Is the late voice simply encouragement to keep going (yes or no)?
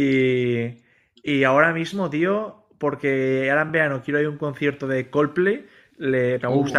yes